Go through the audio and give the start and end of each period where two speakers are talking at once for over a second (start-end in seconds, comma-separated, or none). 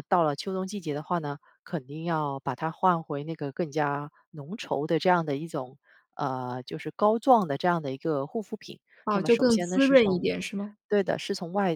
9.1-10.3